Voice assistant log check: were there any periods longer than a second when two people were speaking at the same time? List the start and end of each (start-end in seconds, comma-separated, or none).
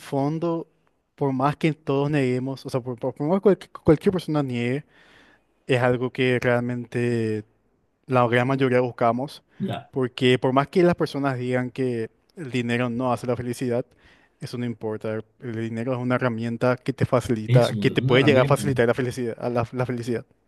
17.5-18.7